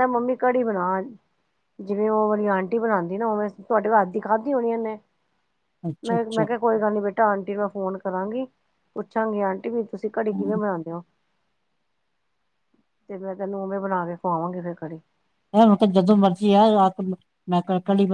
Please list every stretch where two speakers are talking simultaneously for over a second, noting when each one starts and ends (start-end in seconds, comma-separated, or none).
none